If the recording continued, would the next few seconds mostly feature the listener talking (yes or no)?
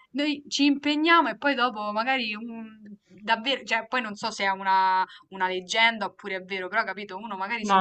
yes